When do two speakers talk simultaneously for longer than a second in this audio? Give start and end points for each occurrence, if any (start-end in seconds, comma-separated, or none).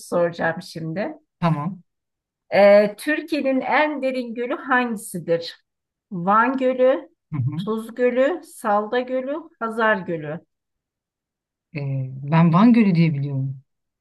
none